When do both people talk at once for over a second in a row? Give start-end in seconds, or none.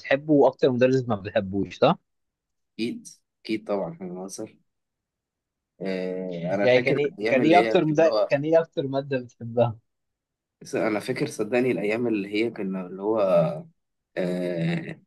6.6-8.3